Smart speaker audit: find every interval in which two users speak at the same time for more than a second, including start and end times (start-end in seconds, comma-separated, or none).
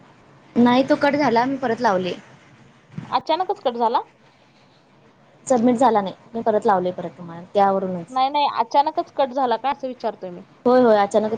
none